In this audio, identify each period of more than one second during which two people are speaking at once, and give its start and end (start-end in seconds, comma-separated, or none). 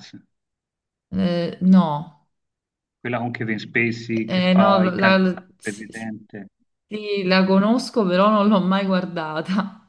4.3-5.8